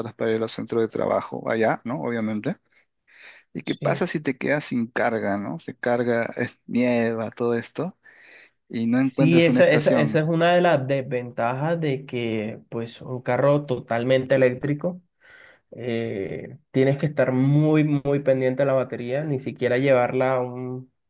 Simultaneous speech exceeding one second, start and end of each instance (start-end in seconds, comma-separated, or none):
8.9-10.2